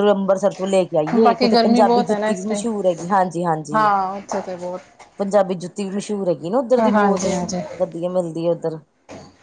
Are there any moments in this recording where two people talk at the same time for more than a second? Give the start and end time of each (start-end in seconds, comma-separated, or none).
1.2-2.6